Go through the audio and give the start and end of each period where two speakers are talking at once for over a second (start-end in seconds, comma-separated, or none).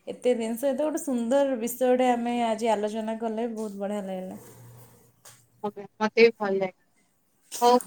none